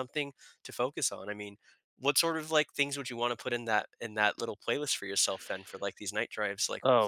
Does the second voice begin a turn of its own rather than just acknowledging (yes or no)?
yes